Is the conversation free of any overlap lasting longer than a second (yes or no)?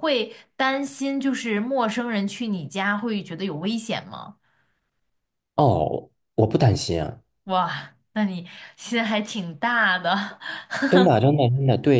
yes